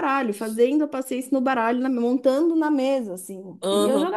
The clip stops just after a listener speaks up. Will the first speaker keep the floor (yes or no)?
no